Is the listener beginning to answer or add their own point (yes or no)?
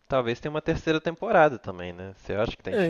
yes